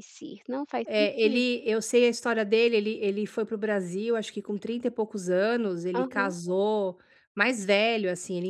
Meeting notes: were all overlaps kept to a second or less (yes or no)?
yes